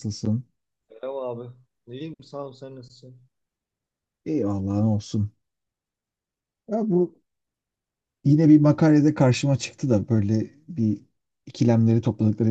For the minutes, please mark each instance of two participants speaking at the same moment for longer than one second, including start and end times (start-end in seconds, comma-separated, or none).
none